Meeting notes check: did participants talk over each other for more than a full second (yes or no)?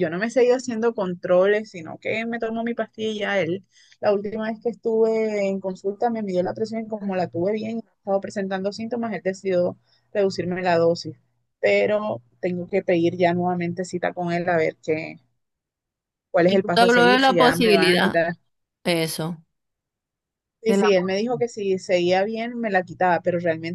yes